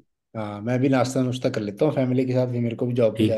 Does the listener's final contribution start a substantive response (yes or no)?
yes